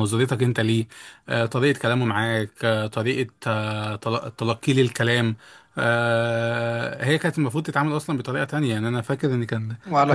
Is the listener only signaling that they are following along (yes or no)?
yes